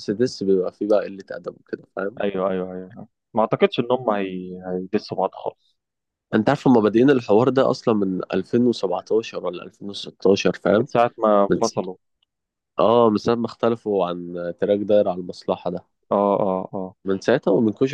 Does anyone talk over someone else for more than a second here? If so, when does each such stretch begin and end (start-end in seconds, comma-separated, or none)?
none